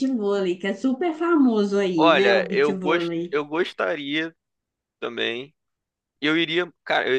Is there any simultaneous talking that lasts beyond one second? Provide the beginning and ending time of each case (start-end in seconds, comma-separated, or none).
2.0-3.4